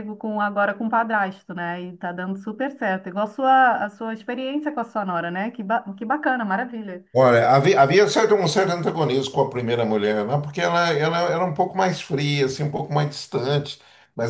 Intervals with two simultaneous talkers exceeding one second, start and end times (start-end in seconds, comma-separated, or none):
none